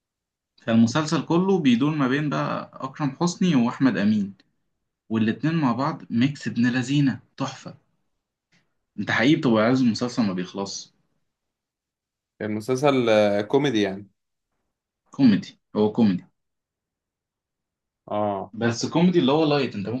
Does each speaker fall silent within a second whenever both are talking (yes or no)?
yes